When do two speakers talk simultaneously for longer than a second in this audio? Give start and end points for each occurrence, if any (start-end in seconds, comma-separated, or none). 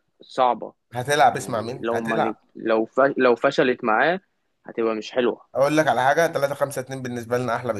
1.2-2.5